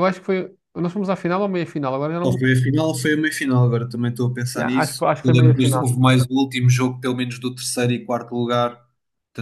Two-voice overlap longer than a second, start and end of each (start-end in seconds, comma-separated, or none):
4.5-6.0